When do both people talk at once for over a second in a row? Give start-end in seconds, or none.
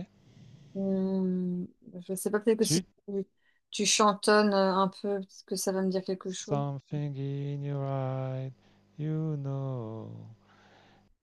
none